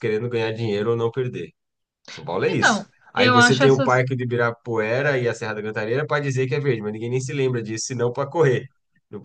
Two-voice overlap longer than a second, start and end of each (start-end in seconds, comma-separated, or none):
2.5-4.0